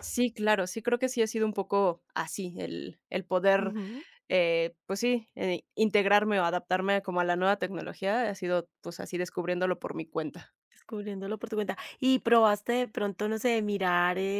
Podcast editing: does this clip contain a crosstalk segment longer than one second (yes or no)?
no